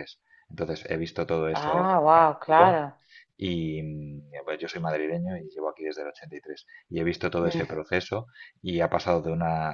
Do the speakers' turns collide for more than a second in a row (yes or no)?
yes